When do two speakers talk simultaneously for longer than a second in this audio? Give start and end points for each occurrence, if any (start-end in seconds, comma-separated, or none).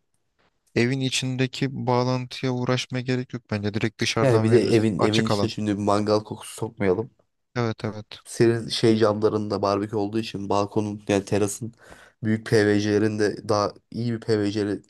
4.2-5.5